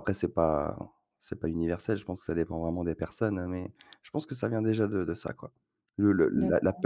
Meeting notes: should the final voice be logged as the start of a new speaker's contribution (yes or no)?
no